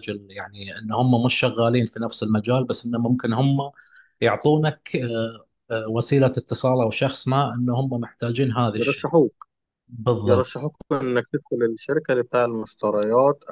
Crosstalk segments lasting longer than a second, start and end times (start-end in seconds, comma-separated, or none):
none